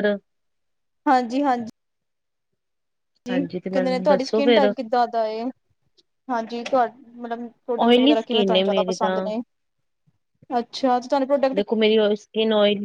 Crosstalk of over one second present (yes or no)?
yes